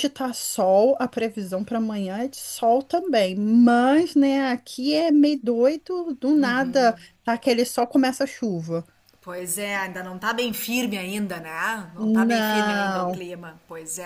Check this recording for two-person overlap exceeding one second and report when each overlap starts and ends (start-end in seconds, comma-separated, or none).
12.0-13.2